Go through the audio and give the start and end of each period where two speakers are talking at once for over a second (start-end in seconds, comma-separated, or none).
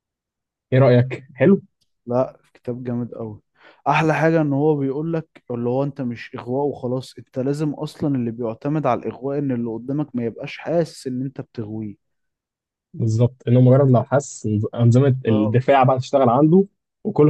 none